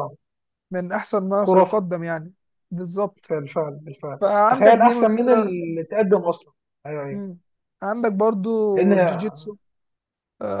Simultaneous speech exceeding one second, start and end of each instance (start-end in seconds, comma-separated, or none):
4.2-5.5